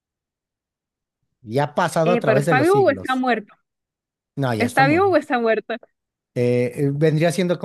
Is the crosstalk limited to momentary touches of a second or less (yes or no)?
no